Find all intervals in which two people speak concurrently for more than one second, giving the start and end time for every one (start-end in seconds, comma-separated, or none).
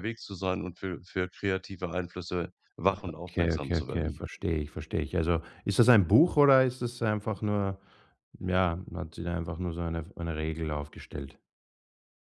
3.0-4.2